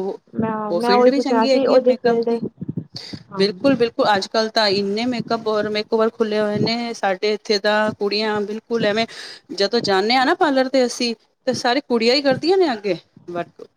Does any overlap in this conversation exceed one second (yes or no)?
yes